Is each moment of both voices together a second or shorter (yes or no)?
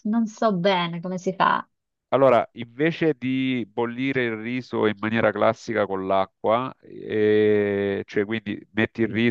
yes